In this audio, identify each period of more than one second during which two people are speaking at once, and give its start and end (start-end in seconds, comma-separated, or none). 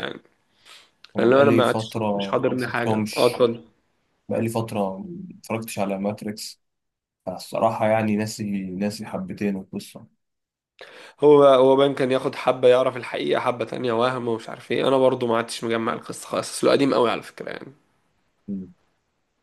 1.2-3.5